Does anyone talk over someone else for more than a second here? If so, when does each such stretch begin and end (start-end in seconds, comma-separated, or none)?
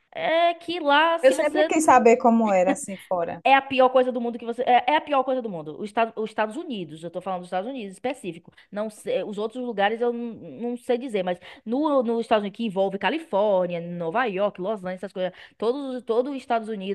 none